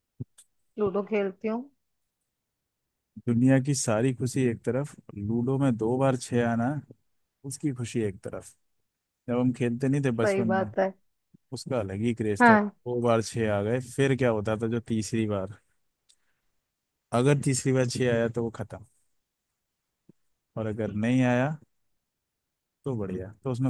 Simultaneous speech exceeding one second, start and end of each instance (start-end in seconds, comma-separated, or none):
none